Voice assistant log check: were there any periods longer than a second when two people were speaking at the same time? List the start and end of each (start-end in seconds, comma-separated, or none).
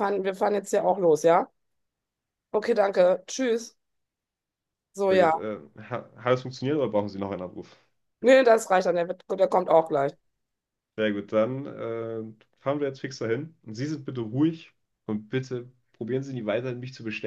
none